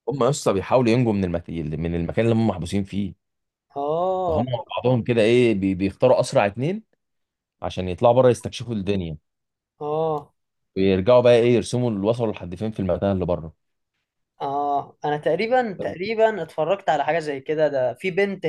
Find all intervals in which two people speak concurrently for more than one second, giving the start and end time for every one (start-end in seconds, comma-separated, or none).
none